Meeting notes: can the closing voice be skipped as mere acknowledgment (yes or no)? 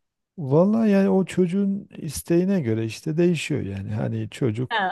yes